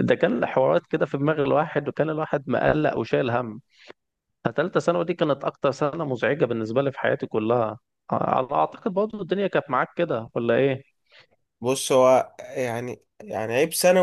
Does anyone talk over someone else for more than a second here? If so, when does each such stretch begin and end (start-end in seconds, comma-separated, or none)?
none